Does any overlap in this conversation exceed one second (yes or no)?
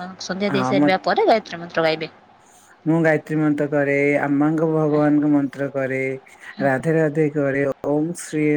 no